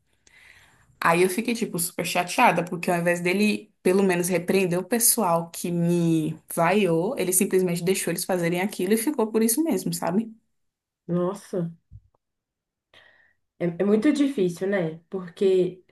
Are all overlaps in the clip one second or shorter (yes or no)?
yes